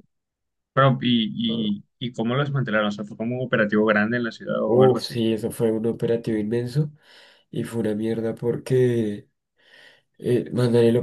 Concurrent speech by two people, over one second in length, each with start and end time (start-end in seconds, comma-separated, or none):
none